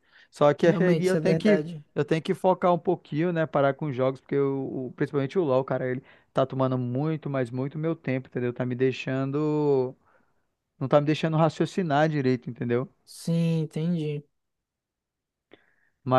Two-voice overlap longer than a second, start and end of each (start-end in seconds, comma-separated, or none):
0.6-1.8